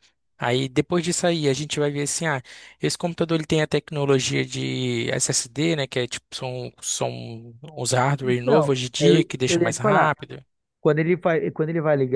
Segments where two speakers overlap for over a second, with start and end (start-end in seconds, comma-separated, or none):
8.2-10.1